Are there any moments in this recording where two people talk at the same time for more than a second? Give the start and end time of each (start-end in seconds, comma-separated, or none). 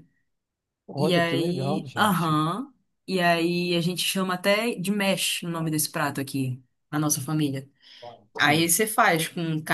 1.0-2.3